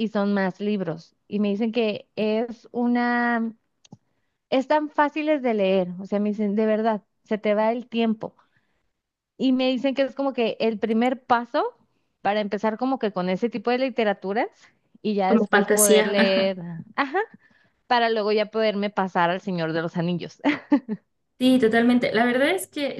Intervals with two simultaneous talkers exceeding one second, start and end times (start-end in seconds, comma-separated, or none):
15.3-16.6